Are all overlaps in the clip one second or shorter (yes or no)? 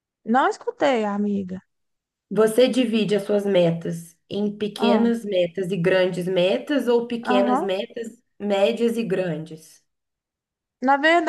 yes